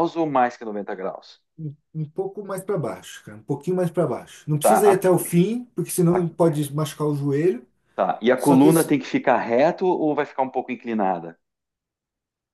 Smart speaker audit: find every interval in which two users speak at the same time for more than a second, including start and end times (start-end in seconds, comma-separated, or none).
none